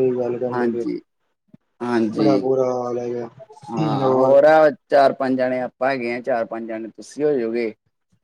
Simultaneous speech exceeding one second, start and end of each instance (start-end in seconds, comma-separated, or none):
none